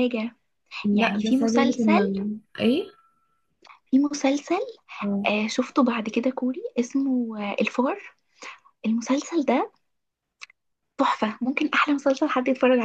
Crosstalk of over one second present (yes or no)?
yes